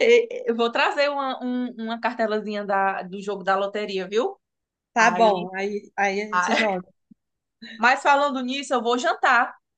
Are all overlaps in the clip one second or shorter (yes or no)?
yes